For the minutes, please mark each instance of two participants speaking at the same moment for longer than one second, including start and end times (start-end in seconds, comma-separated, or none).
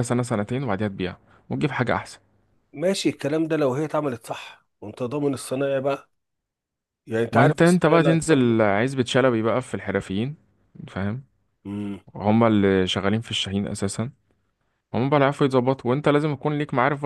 7.3-8.6